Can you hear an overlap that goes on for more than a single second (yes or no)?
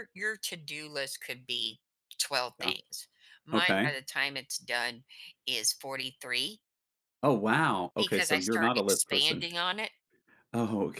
yes